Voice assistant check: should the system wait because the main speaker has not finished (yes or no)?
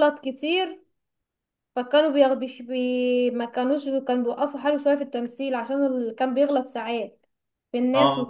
no